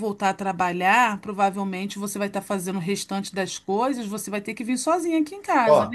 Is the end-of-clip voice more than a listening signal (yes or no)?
yes